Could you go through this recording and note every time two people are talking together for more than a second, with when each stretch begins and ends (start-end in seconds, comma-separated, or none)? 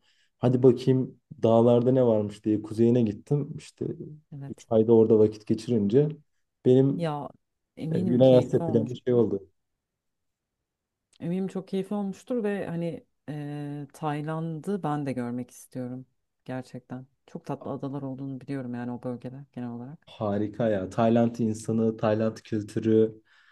7.9-9.2